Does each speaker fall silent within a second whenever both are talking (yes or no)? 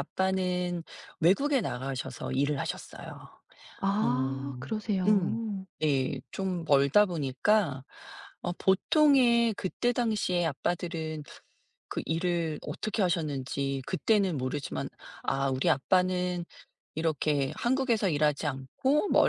no